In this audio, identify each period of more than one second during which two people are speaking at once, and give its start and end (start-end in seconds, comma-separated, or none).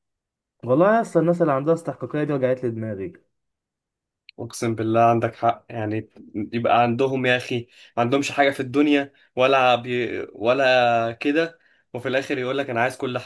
none